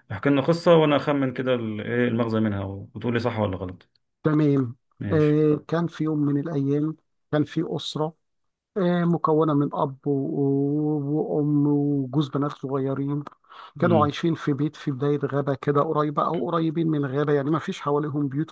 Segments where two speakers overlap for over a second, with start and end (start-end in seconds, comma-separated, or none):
none